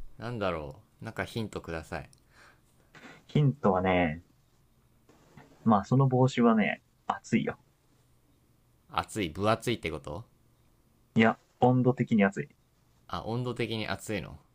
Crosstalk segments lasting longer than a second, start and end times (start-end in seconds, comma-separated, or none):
none